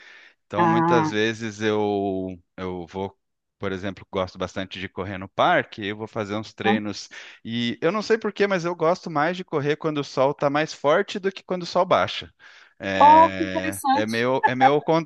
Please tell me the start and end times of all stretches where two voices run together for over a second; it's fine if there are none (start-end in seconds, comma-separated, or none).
13.0-14.2